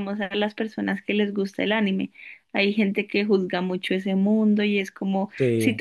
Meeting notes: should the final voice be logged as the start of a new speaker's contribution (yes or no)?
no